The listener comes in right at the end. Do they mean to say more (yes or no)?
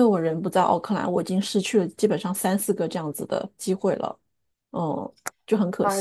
yes